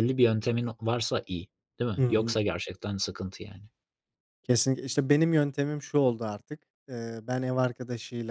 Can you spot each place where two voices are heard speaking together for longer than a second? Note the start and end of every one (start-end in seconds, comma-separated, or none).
none